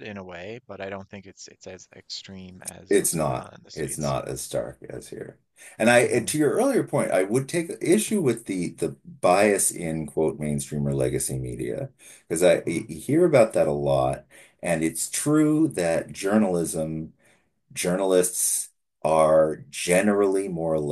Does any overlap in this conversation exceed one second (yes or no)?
yes